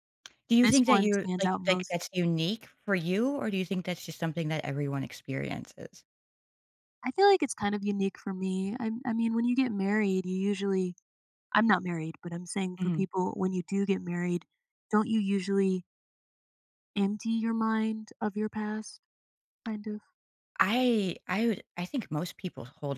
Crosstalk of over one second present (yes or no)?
yes